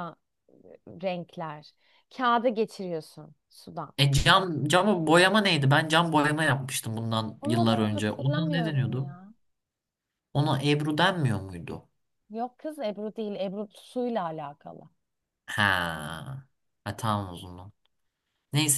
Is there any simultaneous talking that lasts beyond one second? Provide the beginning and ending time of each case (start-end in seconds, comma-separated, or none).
7.4-9.1